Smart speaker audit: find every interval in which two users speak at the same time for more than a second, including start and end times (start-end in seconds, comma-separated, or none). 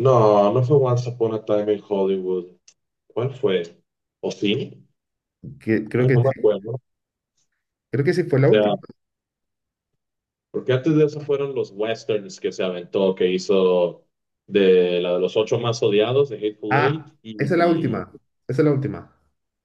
16.7-18.1